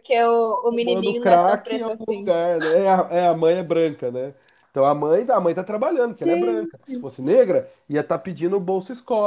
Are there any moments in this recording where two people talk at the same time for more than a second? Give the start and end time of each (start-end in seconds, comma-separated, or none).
0.7-2.3